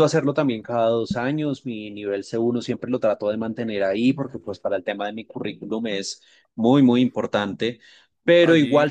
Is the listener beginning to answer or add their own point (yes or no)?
no